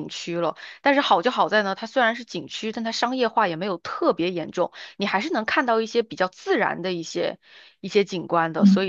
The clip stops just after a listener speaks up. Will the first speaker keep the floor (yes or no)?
no